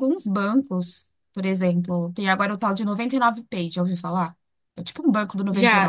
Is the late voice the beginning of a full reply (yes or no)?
yes